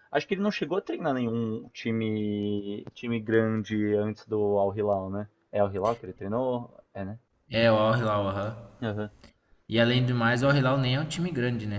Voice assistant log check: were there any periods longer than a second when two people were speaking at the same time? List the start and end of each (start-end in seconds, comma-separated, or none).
none